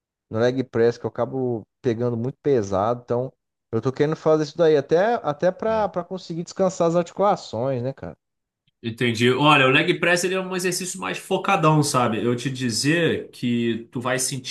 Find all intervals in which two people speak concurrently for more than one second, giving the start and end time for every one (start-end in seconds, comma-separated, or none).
none